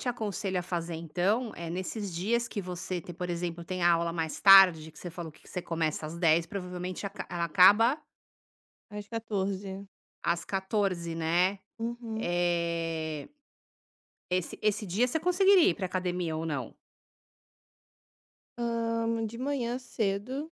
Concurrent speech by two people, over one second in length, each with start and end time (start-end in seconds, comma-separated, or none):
none